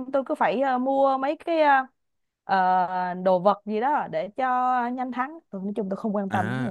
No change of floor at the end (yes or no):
no